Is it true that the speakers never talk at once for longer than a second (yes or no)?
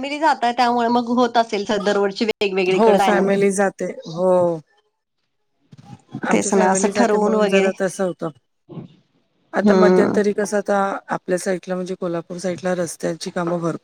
no